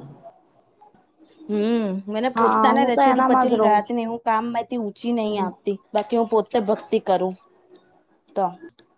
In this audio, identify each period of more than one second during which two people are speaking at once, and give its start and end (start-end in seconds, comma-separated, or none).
2.4-4.0